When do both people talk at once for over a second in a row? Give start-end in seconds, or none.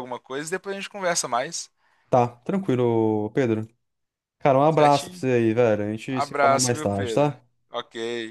6.1-7.4